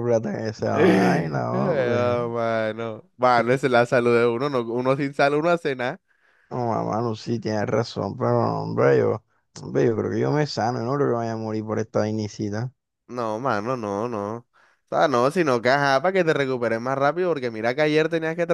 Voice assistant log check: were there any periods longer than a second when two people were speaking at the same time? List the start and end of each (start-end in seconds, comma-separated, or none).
0.7-2.2